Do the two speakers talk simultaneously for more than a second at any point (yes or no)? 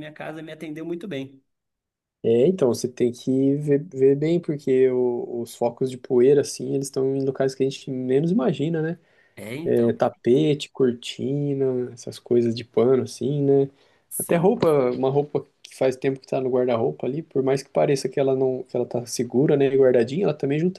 no